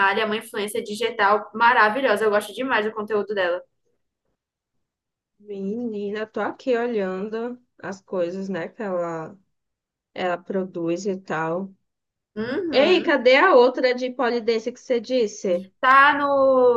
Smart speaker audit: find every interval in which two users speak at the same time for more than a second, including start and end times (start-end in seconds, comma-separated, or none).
none